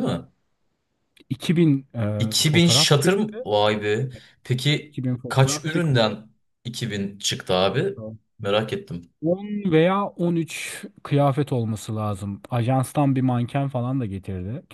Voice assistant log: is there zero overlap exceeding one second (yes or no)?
no